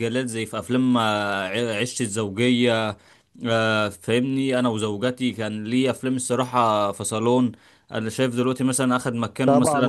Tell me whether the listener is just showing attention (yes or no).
no